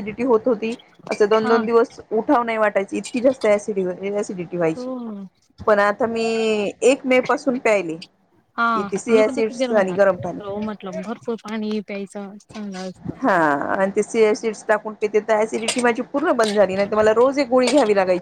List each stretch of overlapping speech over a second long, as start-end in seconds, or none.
none